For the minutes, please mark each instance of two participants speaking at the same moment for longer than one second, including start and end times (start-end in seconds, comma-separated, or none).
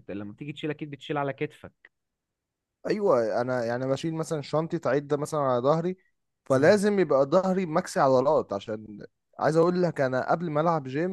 none